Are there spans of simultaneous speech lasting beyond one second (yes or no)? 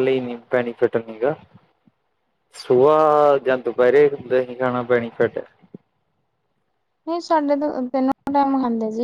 no